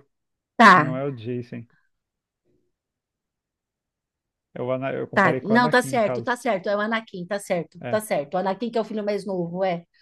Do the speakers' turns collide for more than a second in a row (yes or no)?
yes